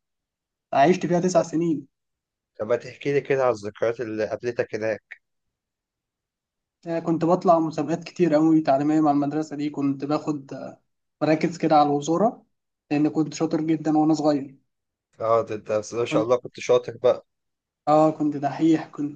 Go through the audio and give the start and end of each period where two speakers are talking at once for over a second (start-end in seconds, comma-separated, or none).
none